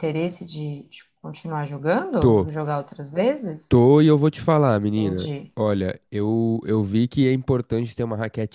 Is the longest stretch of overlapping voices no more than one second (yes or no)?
yes